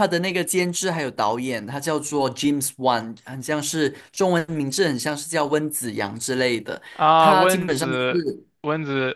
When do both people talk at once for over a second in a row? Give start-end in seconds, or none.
7.2-8.5